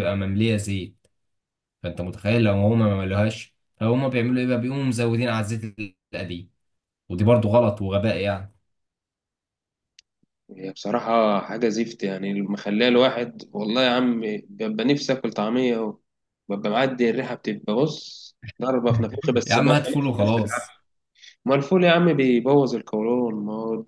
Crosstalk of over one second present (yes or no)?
yes